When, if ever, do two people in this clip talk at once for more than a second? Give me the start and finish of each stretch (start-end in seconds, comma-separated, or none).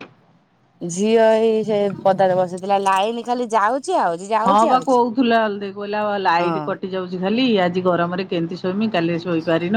none